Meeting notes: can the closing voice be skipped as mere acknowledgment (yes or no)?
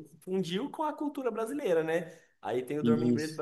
yes